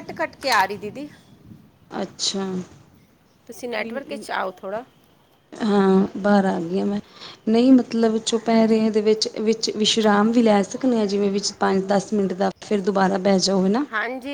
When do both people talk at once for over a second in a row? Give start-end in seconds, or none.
none